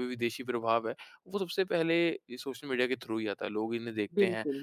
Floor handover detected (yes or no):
no